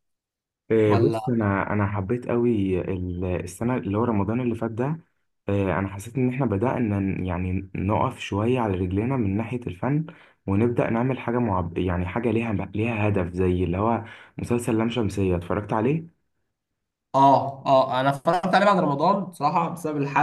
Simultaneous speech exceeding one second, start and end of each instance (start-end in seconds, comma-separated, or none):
none